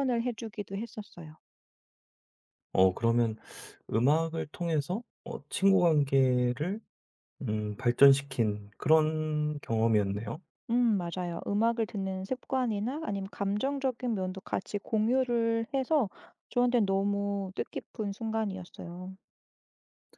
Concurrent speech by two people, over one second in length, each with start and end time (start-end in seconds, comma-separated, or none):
none